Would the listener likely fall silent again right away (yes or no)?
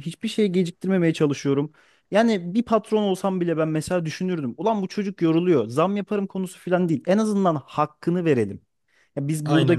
yes